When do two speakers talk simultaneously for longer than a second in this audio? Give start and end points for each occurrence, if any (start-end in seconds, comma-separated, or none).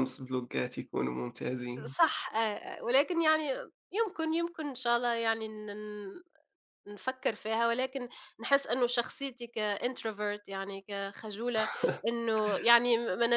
none